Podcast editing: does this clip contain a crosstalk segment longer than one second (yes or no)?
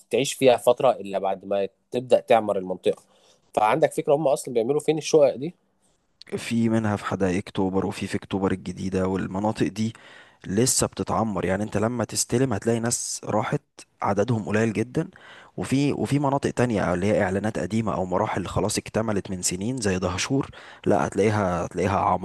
no